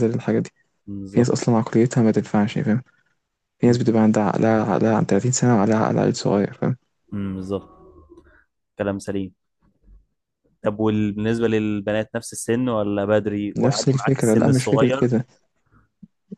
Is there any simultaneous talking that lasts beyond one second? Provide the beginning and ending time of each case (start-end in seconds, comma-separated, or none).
13.6-15.1